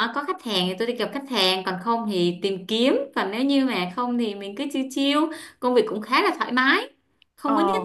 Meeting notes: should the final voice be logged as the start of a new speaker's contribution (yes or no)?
no